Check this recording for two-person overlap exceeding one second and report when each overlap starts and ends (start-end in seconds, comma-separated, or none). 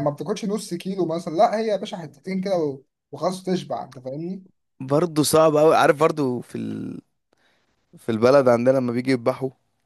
none